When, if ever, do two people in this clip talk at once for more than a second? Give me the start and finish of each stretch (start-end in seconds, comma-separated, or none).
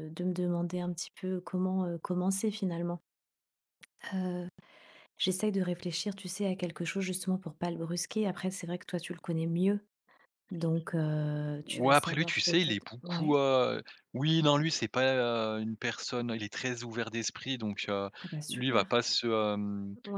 11.6-13.4